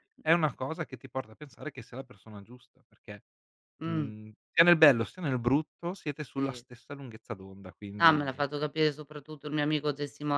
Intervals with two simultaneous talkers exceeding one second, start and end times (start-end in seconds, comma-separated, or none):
none